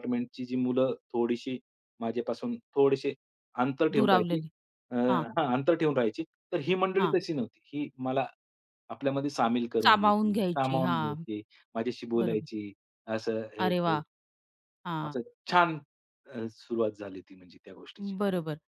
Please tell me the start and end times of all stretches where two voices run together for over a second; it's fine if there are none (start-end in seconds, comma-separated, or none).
9.8-11.2